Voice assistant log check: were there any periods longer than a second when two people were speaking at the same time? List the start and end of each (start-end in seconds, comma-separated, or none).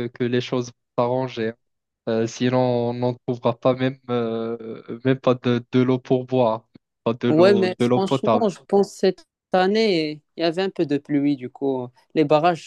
7.3-8.5